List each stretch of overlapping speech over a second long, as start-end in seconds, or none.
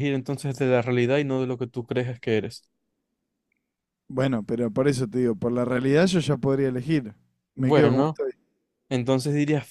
none